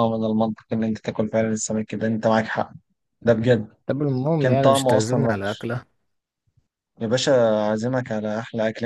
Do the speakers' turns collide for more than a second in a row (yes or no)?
yes